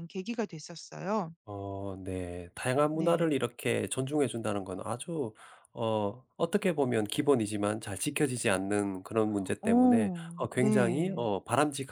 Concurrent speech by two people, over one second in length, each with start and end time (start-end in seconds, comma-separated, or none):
9.6-11.2